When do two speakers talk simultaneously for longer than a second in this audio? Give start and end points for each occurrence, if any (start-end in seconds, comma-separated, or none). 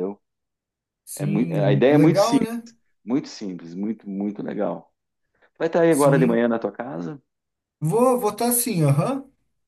1.1-2.5